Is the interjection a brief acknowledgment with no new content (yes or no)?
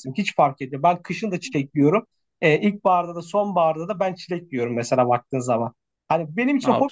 yes